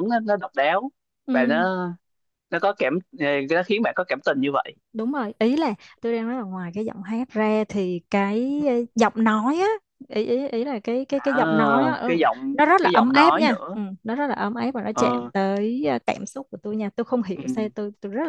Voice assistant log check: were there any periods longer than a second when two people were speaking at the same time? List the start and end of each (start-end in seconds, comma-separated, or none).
12.1-13.8